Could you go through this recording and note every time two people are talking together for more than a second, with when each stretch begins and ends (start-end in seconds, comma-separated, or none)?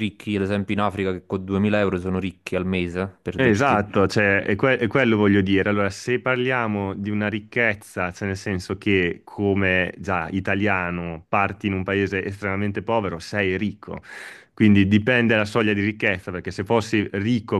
none